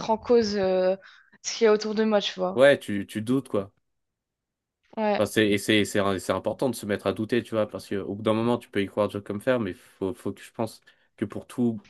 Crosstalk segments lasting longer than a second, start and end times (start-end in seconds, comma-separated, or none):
none